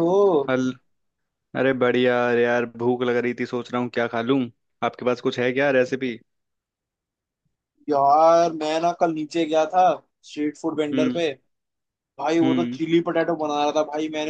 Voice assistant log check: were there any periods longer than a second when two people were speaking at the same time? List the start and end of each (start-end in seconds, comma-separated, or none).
none